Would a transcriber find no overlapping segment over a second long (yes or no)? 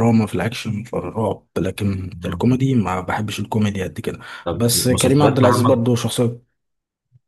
no